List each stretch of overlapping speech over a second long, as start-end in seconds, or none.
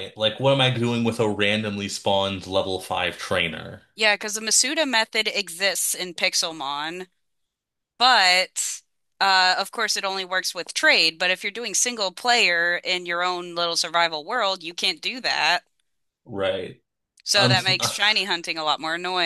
none